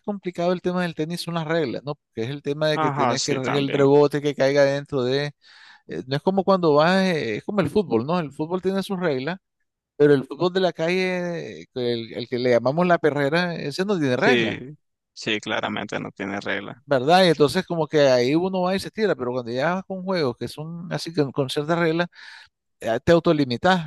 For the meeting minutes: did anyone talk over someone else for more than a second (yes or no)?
yes